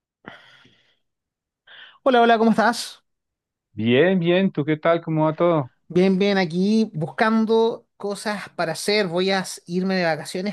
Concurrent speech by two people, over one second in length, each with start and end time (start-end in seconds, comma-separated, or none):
none